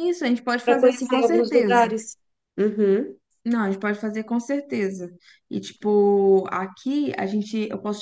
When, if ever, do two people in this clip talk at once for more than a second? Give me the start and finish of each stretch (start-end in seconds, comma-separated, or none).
0.6-1.9